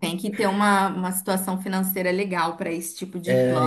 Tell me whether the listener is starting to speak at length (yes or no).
yes